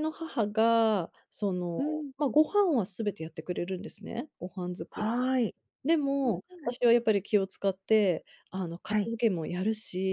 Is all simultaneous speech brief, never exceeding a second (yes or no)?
yes